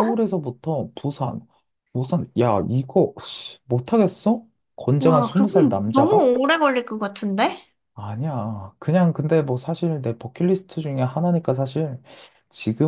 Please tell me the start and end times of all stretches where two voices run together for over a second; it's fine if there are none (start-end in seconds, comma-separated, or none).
5.0-6.3